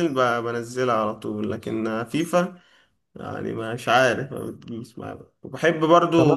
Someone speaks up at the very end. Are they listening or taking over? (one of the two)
taking over